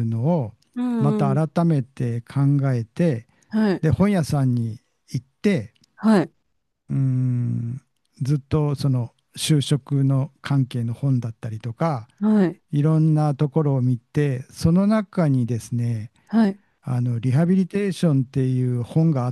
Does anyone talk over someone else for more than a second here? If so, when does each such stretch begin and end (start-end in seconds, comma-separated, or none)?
none